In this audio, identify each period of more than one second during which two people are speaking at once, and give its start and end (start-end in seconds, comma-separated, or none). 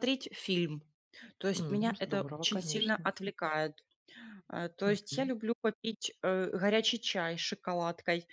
1.6-3.1